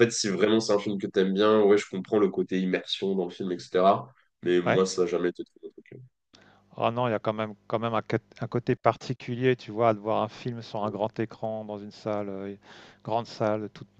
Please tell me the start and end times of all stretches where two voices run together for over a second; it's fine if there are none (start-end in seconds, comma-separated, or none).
none